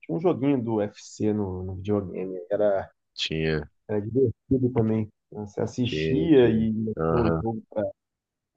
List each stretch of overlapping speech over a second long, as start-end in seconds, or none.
5.8-7.4